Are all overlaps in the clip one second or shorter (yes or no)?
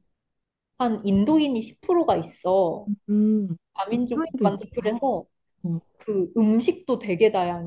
no